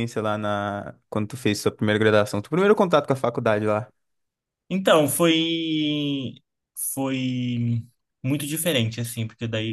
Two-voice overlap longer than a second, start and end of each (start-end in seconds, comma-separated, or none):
none